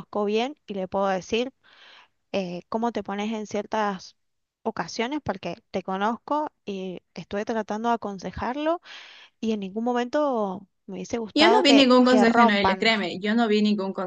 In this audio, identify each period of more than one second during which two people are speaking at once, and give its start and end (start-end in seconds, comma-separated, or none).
11.3-12.9